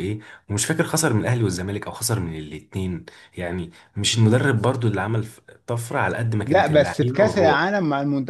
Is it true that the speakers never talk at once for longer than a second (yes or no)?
no